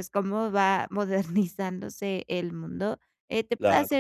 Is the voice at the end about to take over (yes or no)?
no